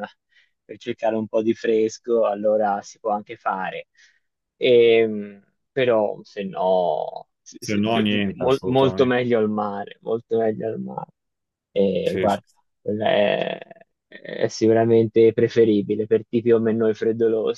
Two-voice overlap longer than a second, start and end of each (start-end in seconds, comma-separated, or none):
7.6-9.1